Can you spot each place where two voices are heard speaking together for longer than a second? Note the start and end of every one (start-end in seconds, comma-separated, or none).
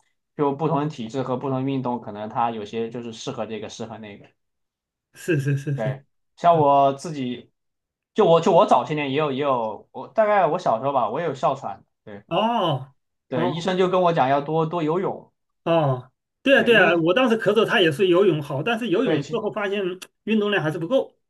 none